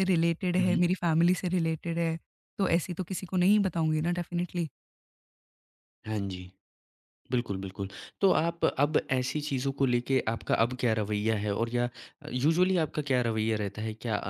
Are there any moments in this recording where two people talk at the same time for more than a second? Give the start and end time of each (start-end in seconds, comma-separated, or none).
none